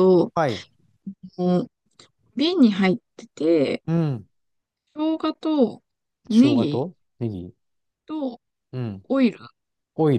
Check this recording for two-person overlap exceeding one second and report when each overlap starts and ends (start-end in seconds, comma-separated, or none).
none